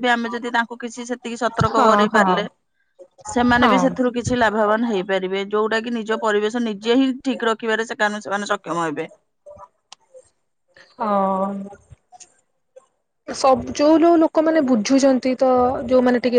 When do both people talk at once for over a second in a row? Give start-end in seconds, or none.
none